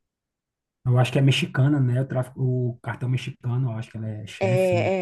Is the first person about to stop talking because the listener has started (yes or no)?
yes